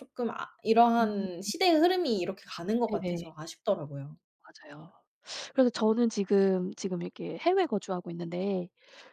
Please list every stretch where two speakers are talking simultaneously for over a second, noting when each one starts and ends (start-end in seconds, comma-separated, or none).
none